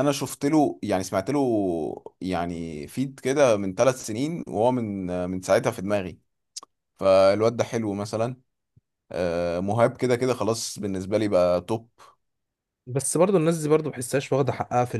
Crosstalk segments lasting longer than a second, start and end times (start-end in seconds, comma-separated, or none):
none